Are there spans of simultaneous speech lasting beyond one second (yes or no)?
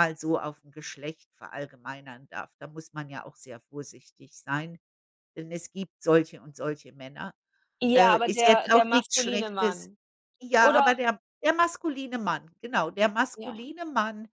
yes